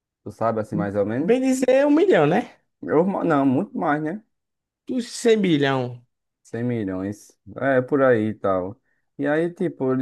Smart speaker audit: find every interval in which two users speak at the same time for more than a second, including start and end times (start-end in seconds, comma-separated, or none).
none